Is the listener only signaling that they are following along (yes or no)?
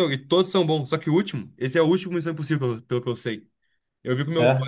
yes